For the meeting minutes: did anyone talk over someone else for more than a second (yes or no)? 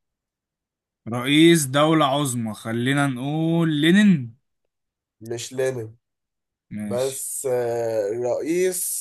no